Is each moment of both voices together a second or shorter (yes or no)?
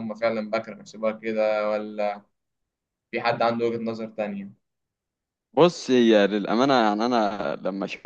yes